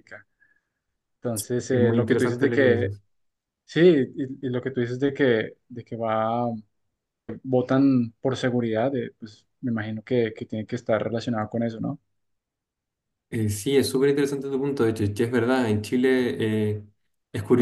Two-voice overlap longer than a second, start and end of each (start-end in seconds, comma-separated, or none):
1.7-2.9